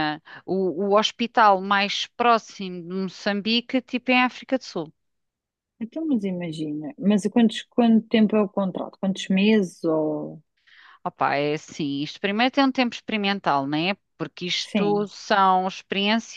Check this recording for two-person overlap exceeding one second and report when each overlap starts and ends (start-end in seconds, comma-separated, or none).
none